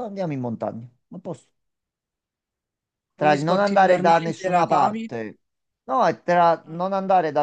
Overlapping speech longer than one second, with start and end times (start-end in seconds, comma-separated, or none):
3.1-5.1